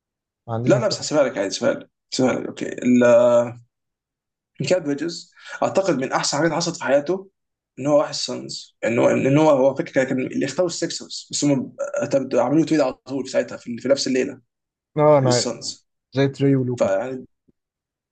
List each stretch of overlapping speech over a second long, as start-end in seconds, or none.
none